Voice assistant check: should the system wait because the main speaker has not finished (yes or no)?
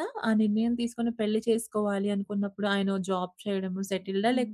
yes